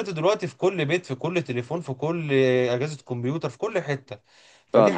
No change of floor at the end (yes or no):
yes